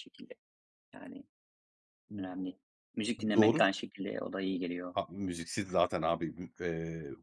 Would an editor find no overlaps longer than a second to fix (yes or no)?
yes